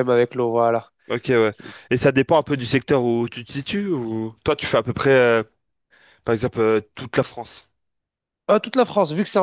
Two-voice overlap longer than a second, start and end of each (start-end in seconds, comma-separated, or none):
none